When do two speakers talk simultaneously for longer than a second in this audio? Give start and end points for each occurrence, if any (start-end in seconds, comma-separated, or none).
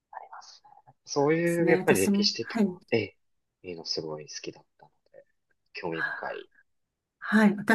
1.4-2.7